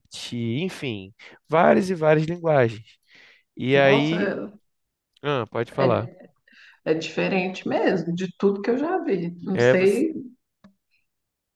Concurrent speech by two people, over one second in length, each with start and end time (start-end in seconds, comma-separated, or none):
none